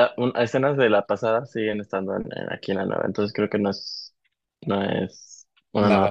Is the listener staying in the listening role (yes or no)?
yes